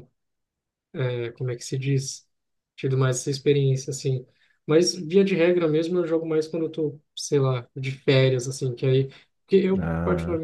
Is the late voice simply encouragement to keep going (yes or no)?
yes